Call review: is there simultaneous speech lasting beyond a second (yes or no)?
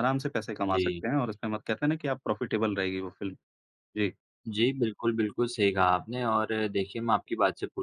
no